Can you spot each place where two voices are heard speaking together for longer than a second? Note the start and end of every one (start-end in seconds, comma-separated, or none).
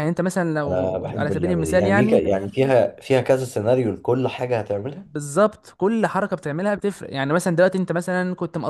0.7-2.2